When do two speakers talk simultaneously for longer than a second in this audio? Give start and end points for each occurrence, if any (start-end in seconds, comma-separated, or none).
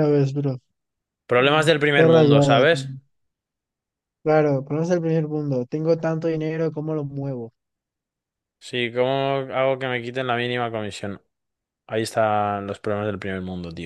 1.4-2.8